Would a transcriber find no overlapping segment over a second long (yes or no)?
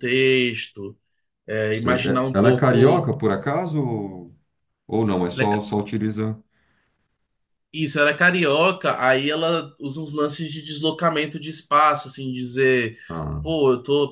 no